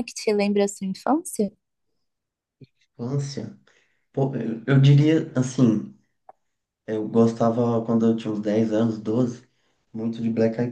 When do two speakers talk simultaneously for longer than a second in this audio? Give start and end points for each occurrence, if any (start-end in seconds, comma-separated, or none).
none